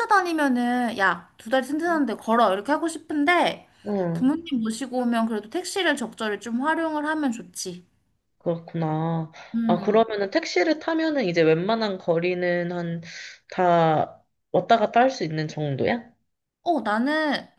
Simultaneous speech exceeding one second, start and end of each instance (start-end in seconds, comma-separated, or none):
none